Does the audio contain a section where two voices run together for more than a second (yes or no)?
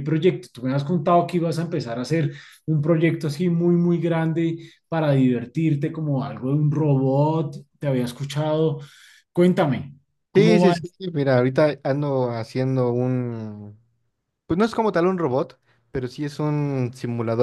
no